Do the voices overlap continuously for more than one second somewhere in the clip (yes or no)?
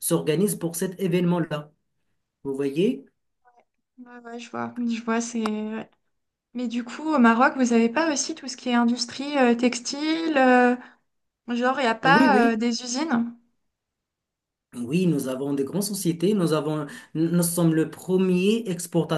no